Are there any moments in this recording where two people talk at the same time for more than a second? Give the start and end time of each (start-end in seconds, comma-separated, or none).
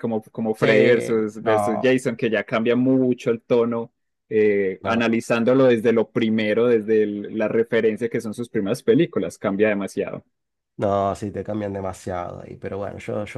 0.6-1.9